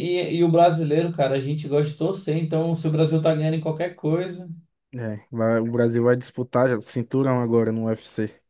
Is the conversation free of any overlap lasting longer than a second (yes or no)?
yes